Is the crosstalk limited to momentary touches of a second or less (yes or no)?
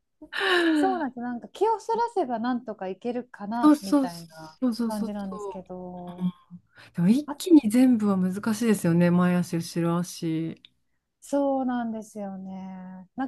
no